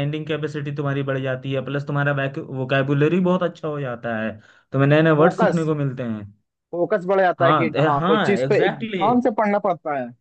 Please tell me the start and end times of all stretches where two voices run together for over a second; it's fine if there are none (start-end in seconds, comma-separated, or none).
7.4-9.3